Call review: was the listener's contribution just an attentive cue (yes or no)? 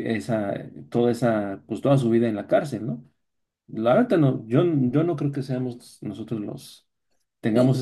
yes